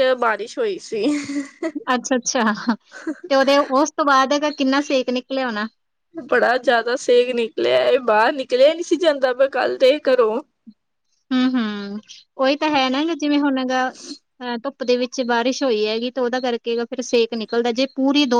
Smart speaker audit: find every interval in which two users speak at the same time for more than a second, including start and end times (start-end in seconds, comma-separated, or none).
none